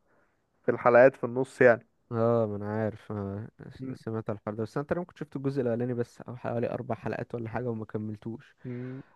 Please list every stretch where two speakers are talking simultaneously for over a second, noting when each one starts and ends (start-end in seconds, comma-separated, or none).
none